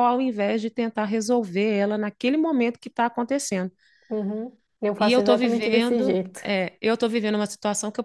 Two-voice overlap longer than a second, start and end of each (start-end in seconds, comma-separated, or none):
5.0-6.4